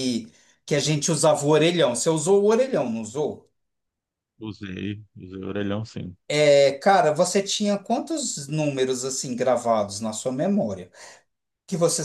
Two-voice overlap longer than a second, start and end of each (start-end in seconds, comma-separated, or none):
none